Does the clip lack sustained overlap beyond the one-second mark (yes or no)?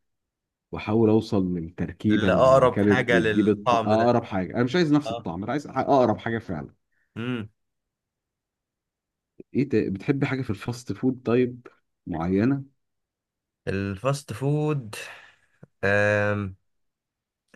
no